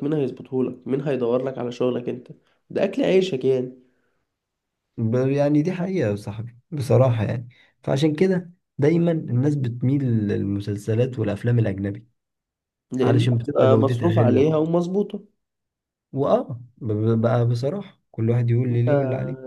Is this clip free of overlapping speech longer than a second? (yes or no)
no